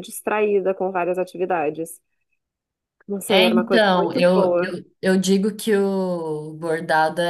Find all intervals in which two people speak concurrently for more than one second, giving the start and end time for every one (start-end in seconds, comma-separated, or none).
3.3-4.7